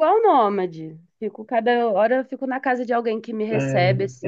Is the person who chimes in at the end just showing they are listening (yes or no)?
no